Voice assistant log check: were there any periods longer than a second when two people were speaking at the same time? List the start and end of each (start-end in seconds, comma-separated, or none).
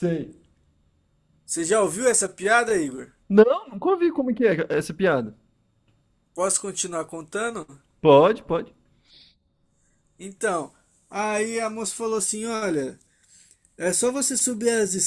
none